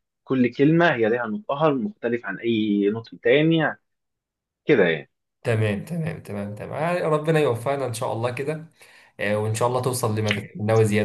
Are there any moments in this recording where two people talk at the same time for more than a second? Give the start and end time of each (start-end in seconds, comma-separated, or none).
none